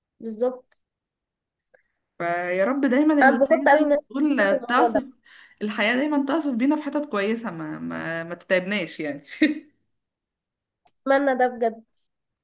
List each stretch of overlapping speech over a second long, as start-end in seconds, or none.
3.2-5.0